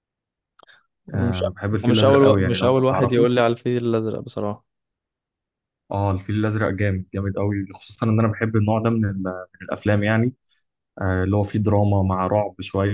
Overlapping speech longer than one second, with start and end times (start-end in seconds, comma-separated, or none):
1.1-3.3